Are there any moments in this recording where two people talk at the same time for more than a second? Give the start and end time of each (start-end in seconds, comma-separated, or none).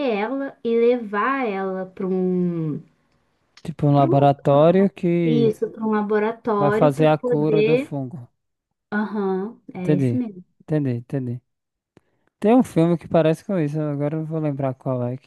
6.6-7.9